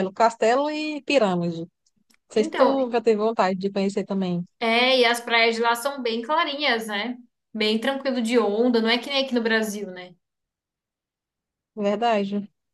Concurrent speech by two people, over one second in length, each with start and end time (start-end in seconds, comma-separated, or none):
none